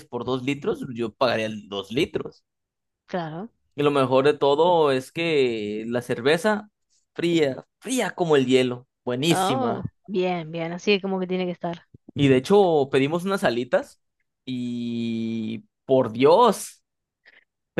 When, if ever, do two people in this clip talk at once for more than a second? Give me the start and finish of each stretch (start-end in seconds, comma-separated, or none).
none